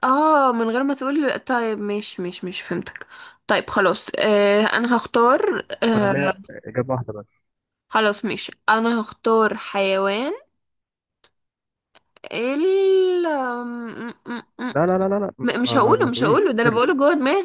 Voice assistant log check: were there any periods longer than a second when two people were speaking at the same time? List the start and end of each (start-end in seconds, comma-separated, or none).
15.4-16.8